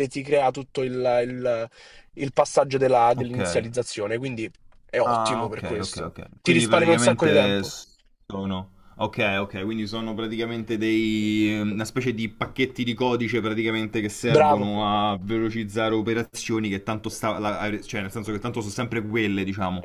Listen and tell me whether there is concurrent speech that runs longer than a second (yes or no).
yes